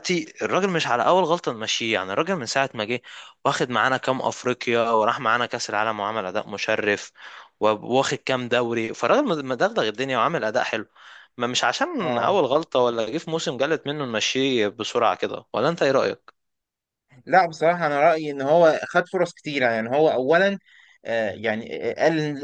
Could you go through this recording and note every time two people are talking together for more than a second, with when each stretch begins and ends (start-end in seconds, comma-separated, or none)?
none